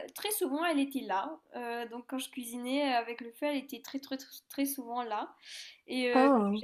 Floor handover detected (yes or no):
no